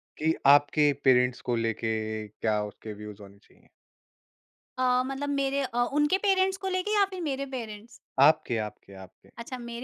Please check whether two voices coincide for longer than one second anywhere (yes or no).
no